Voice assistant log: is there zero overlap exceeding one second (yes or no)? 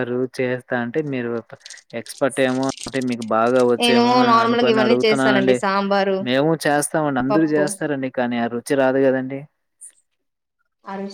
no